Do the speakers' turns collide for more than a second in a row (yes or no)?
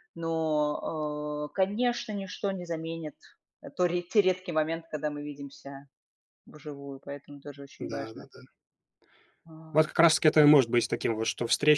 no